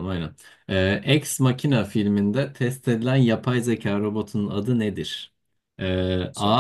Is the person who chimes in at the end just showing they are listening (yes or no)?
yes